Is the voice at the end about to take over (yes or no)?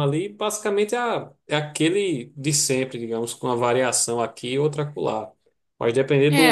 yes